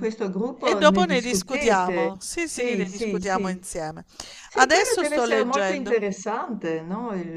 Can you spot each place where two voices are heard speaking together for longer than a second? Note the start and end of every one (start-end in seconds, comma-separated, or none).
0.6-3.6, 4.5-6.0